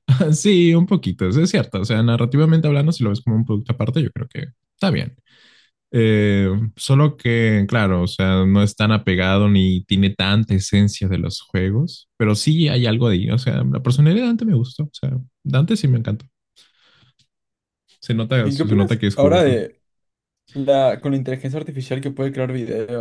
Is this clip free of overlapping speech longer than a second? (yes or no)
no